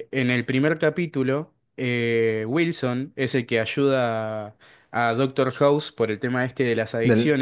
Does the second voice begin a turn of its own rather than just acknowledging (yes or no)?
no